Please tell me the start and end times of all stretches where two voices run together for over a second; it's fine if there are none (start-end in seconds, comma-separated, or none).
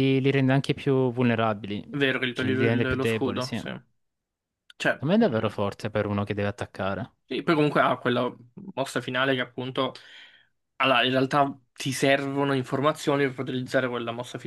2.3-3.7